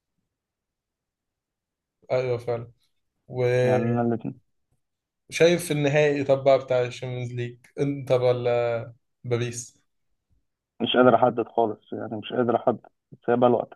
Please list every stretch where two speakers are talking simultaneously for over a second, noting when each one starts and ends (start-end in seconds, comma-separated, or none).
none